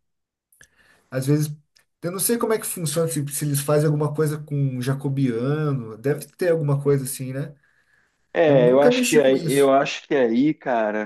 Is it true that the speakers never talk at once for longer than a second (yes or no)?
no